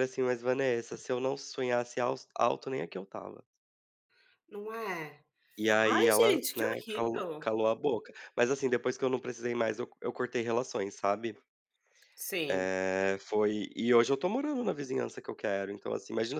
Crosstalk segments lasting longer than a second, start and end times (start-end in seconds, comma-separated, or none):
5.9-7.5